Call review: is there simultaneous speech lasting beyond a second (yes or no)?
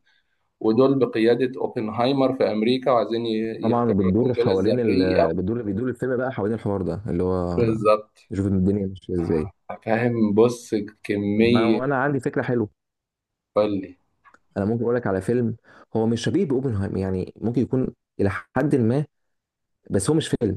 yes